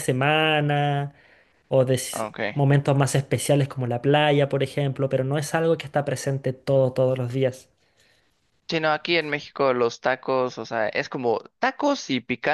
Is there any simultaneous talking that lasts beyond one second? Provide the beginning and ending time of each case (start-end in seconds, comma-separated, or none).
none